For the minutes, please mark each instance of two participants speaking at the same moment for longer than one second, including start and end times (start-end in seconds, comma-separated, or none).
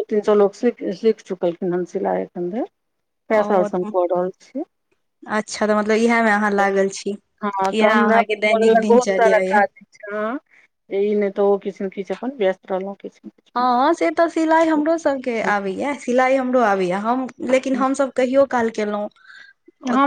7.7-9.6